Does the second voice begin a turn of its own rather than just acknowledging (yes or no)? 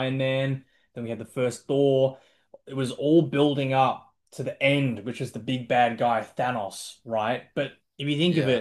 no